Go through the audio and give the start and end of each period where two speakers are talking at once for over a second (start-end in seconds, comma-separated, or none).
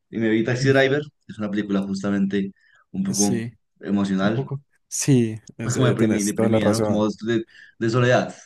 5.6-7.1